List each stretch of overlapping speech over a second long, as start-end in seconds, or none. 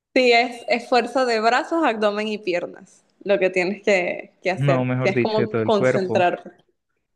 4.5-6.2